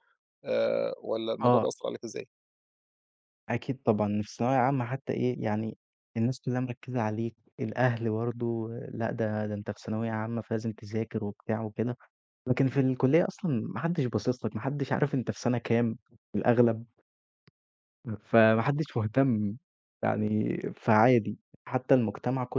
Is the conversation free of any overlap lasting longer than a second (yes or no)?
yes